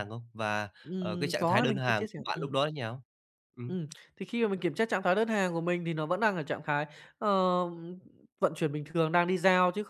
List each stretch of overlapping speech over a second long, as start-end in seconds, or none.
0.8-2.6